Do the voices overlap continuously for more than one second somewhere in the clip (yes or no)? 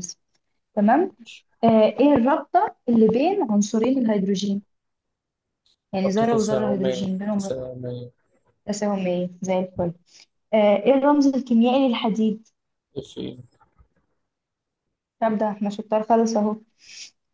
yes